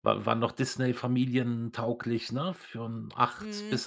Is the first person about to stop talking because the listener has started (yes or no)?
yes